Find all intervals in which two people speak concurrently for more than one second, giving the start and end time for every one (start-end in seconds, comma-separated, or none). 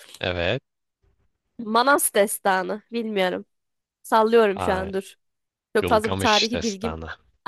5.8-7.0